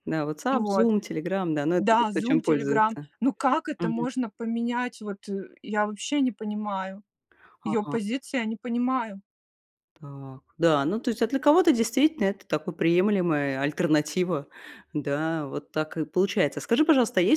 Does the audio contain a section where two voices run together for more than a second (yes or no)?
yes